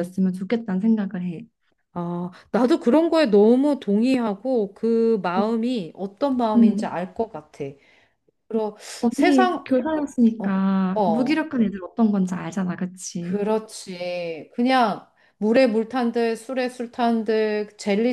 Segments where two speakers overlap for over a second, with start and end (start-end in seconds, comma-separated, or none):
9.0-11.5